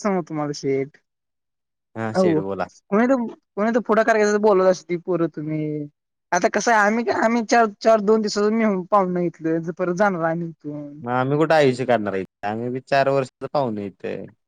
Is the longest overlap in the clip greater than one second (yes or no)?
no